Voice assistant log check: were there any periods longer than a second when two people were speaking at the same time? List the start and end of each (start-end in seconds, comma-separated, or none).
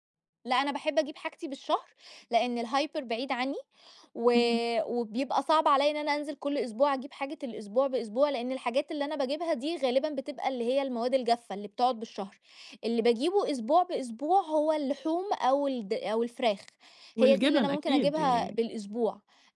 17.2-18.6